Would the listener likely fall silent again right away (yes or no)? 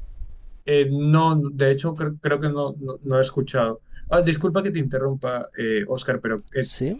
yes